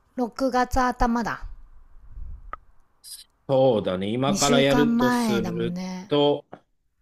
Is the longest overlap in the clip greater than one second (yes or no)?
yes